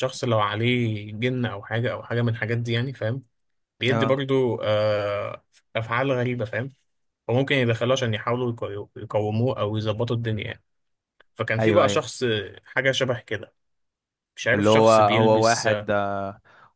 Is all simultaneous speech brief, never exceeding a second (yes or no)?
no